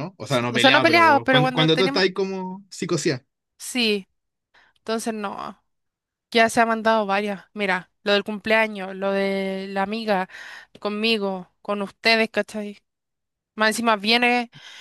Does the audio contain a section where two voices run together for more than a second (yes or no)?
yes